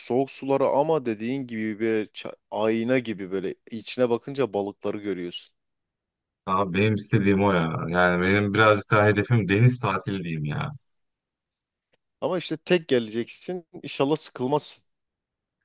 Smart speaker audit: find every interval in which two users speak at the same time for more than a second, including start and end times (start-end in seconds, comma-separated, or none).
none